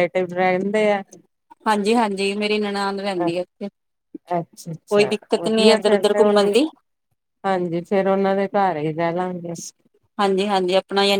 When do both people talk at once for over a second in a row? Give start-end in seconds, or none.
4.9-6.5